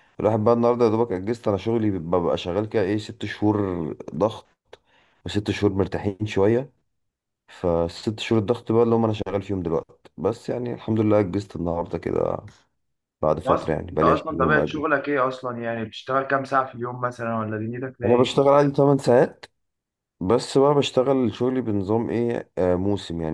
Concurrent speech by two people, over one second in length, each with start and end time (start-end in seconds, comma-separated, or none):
13.3-14.9